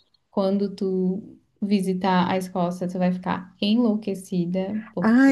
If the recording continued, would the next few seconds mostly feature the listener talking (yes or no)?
yes